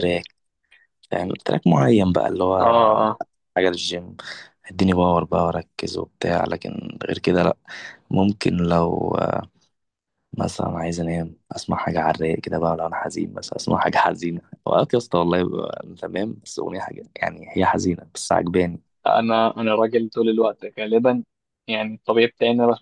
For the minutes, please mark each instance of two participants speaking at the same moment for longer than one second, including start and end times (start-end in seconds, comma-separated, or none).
none